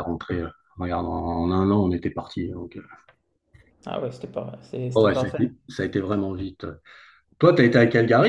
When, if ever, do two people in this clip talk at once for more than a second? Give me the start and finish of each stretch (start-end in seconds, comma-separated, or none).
none